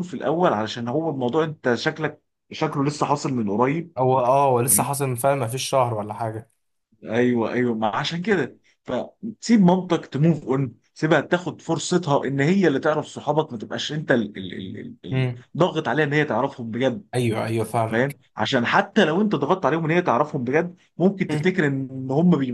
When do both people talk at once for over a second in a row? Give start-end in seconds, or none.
none